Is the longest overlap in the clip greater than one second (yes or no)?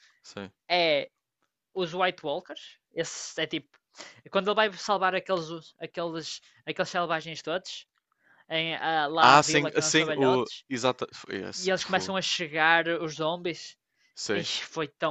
yes